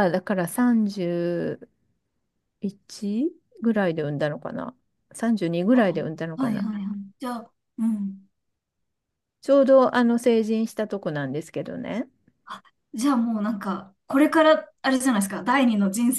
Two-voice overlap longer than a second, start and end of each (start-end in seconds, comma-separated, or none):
none